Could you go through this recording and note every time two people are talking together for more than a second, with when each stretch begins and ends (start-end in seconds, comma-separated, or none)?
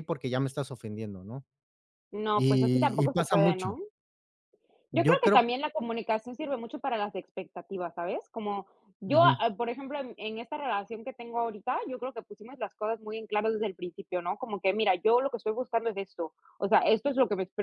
2.4-3.8